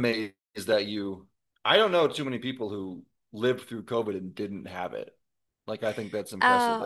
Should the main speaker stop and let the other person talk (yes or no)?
yes